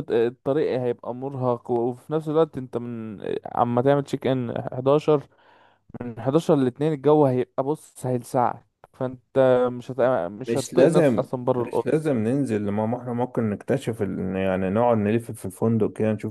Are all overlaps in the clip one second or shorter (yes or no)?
no